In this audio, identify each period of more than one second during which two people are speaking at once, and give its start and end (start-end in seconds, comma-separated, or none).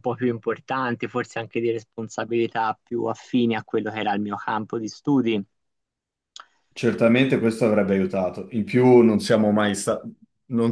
none